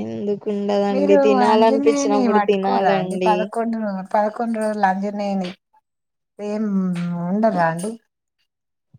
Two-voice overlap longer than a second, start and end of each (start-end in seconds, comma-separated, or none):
1.5-3.3